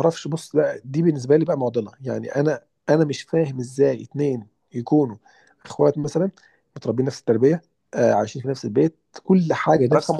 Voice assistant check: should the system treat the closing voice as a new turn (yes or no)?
yes